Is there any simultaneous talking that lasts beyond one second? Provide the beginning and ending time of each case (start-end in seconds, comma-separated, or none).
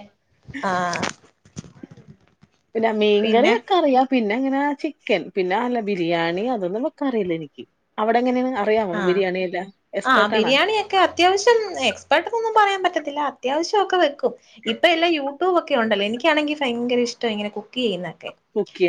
none